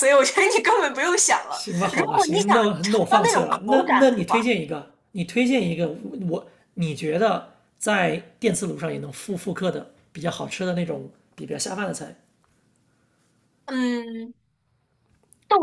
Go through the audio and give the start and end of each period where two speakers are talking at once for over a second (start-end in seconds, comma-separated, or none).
1.5-4.5